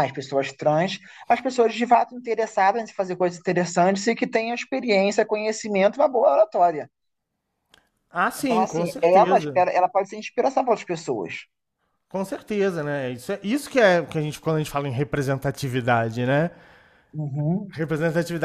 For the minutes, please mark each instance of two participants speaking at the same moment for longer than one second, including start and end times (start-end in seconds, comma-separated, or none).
8.3-9.7